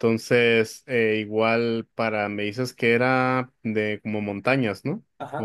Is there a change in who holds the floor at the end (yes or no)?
yes